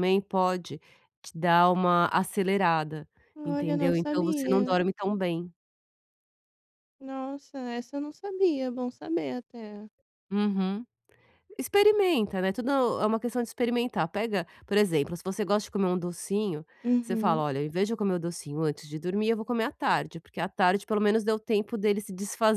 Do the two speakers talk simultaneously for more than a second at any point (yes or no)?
yes